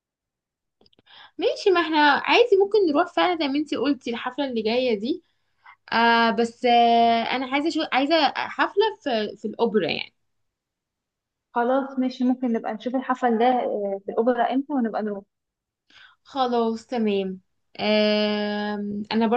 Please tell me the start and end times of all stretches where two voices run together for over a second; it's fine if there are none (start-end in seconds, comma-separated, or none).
none